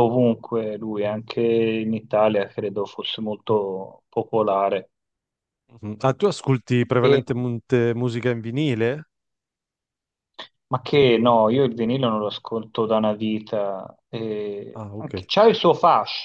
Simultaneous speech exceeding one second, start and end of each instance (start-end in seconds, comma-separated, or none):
none